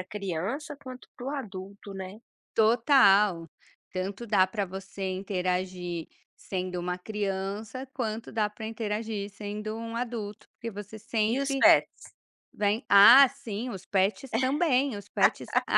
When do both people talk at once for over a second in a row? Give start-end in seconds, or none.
none